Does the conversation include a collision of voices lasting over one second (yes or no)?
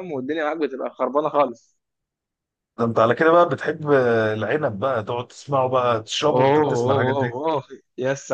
yes